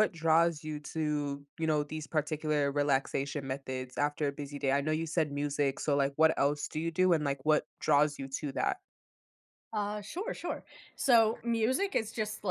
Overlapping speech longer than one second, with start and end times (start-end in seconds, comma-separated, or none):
none